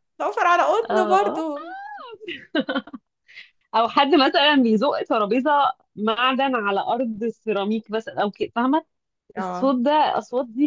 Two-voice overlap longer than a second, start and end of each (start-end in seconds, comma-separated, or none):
none